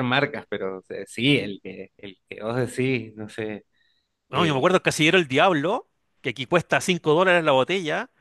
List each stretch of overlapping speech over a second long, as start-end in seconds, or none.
none